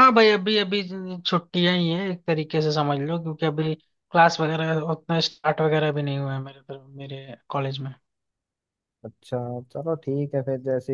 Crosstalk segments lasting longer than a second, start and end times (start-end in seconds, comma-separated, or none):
none